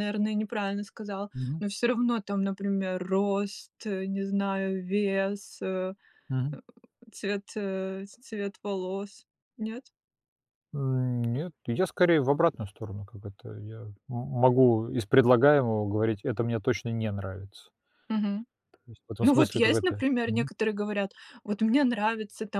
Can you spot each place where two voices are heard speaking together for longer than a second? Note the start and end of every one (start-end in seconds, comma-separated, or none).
19.2-20.5